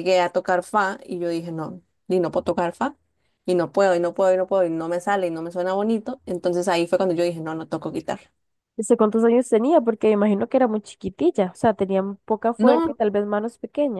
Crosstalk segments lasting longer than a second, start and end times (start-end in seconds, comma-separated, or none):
none